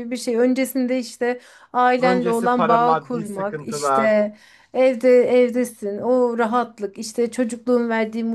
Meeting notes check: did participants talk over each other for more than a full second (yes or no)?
yes